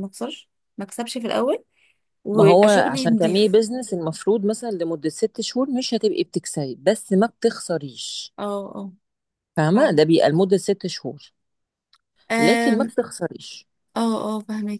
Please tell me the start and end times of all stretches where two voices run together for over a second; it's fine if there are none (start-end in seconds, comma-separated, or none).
2.3-3.6